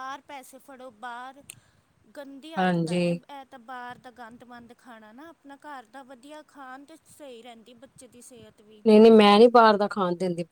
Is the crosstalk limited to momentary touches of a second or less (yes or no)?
yes